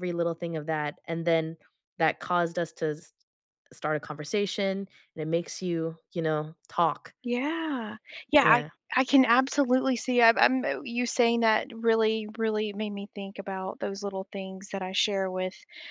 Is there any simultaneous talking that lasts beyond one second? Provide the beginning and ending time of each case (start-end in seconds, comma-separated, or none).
none